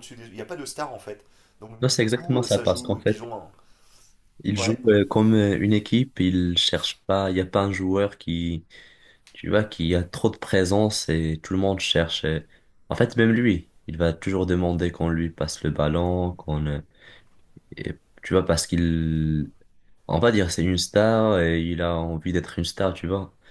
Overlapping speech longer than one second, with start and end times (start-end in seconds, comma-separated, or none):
1.8-3.3